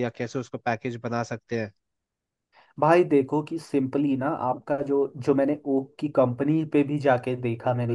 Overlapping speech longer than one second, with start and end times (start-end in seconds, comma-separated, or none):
none